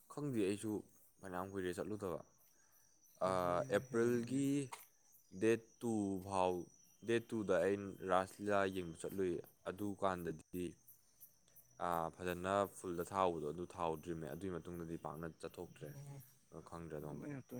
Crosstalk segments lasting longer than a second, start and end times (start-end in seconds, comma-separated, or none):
3.3-4.5